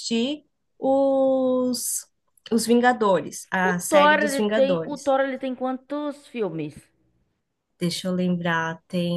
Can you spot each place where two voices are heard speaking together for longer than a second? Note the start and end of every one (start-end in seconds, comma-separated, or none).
3.6-5.1